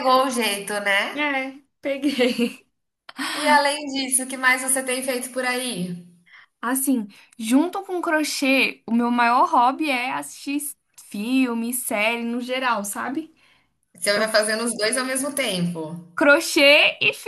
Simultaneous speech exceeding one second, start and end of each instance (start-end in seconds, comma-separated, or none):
none